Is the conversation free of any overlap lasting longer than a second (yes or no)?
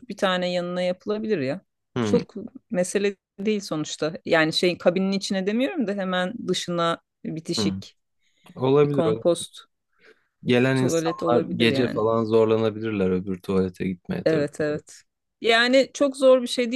no